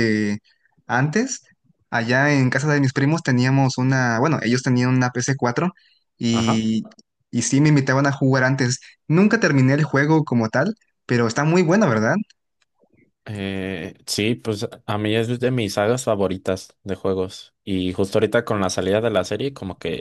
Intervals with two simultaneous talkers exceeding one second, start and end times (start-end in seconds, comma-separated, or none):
none